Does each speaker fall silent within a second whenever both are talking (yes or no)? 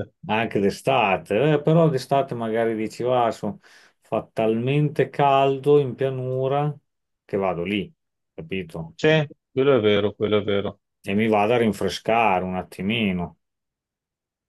yes